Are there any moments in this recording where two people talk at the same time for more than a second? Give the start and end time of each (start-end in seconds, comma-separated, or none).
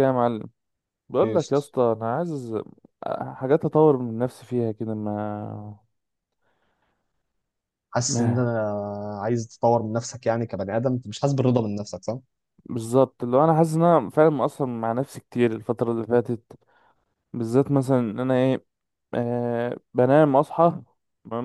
none